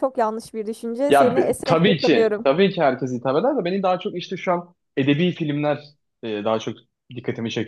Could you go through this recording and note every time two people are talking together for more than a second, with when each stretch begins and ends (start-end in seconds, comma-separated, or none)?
1.1-2.5